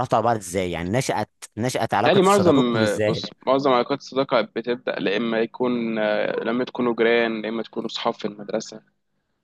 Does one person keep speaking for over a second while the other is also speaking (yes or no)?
yes